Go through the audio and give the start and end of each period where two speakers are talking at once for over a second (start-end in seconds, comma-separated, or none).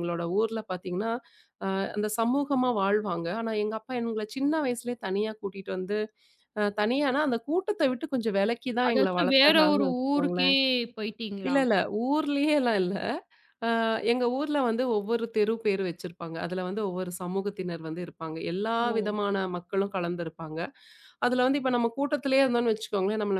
8.9-10.5